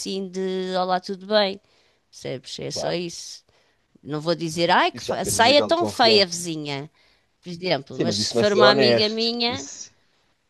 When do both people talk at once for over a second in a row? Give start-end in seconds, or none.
4.9-6.4, 7.9-9.7